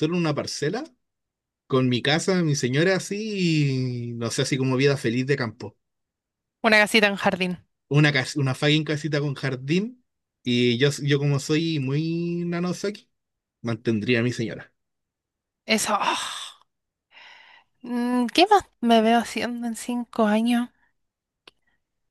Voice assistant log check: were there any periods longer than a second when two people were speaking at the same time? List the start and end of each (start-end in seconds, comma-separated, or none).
none